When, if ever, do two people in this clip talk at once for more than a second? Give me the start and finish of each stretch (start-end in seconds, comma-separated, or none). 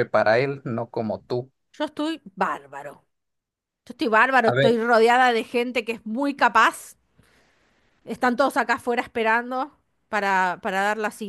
none